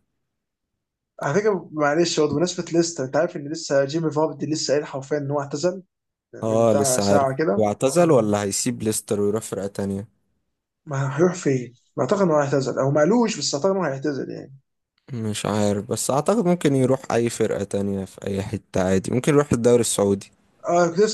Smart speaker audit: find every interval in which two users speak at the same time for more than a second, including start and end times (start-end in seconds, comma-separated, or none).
6.4-8.3